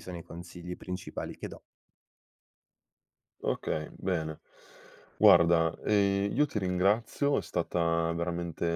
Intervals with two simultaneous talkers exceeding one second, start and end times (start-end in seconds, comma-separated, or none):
none